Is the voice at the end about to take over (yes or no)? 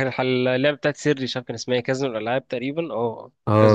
yes